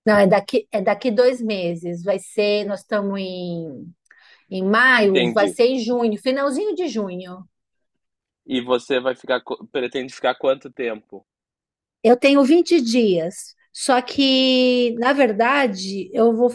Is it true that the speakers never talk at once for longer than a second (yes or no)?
yes